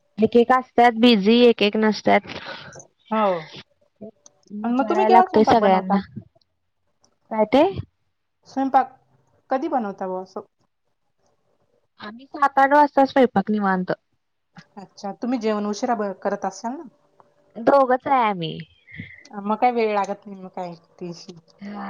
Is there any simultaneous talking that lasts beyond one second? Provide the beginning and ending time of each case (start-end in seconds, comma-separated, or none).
4.6-6.0